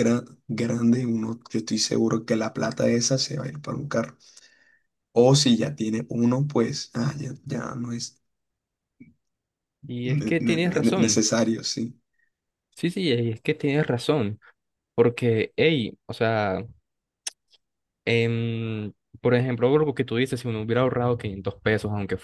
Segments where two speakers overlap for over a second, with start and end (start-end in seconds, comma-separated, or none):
10.0-11.2